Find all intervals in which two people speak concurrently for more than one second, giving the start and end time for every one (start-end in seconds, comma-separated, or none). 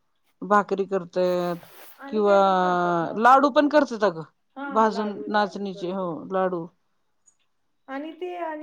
4.7-6.1